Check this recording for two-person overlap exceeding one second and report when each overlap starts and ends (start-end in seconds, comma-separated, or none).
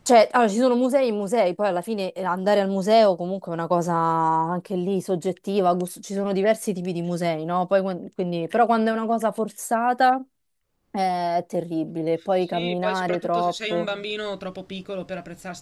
12.4-13.9